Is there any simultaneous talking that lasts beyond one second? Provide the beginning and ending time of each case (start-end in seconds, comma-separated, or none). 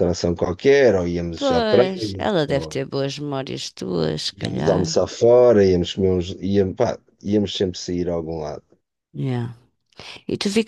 1.4-2.8